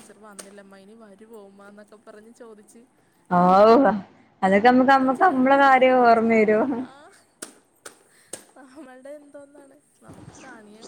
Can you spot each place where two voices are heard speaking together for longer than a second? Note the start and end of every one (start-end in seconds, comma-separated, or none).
5.0-6.3